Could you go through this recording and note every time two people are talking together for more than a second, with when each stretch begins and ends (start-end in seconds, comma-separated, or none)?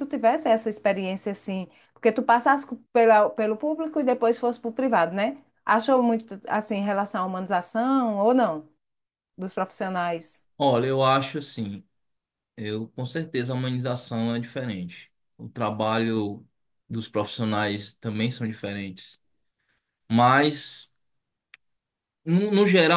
none